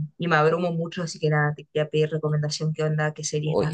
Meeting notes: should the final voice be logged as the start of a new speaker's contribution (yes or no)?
yes